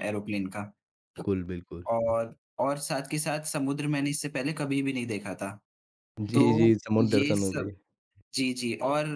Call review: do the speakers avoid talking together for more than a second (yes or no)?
no